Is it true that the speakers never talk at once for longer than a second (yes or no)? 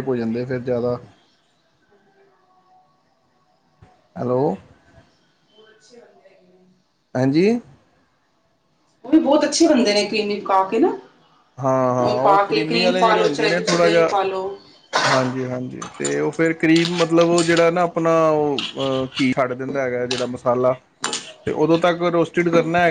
no